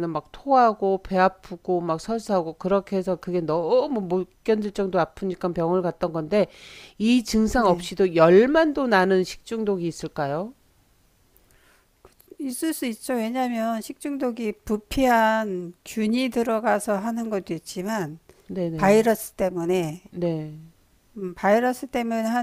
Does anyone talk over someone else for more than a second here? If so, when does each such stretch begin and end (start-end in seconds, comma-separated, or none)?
none